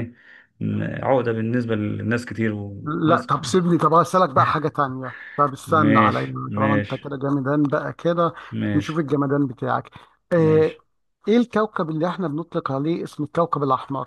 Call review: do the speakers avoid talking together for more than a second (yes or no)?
no